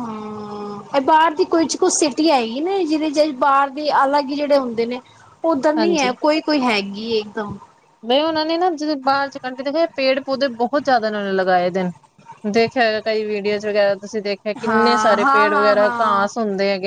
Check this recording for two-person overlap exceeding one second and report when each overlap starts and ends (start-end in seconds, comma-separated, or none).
14.6-16.2